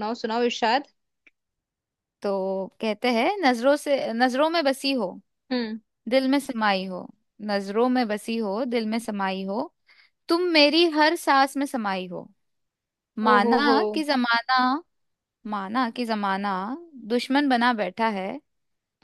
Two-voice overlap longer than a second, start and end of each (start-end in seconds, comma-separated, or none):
none